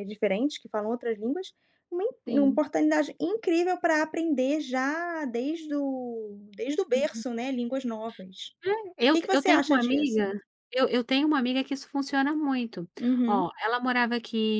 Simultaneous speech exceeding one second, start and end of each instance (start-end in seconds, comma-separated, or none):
9.1-10.3